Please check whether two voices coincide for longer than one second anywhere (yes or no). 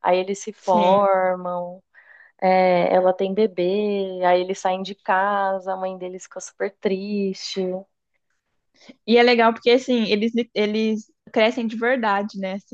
no